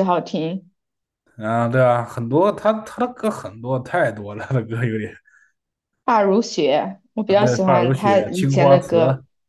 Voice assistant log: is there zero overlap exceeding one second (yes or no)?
no